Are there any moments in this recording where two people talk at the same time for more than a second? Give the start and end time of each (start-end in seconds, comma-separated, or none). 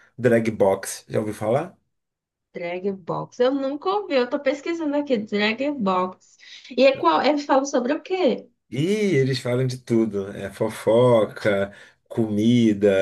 none